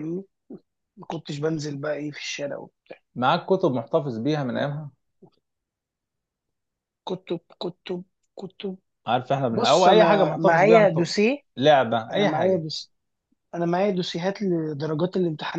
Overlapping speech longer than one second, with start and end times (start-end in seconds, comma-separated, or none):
9.5-11.0